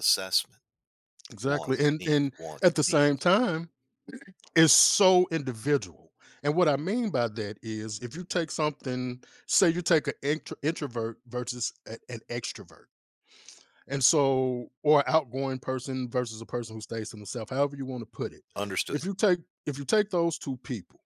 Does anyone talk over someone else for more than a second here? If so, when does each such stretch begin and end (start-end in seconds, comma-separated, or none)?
1.5-3.3